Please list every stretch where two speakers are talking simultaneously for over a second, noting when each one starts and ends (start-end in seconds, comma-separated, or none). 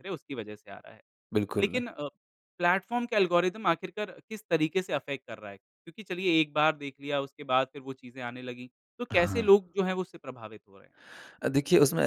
none